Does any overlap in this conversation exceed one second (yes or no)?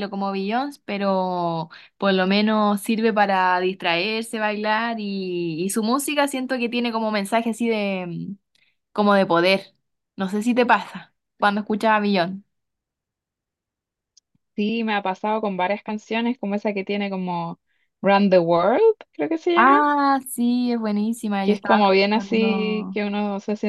yes